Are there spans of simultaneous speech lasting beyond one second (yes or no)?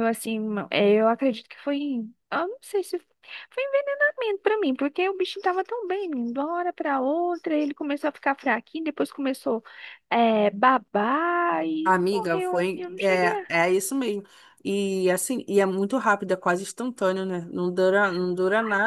yes